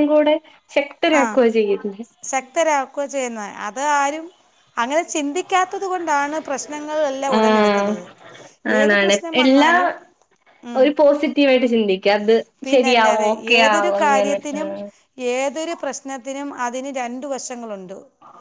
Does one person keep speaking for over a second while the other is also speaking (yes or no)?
yes